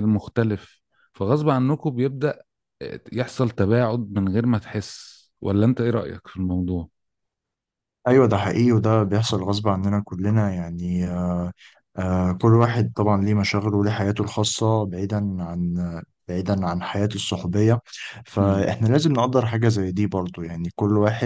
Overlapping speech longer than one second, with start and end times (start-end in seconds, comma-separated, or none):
none